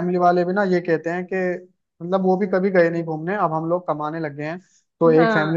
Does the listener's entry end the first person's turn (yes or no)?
yes